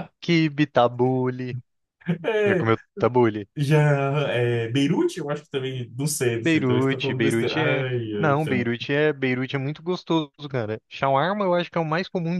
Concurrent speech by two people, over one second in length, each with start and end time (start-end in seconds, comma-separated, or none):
6.4-8.7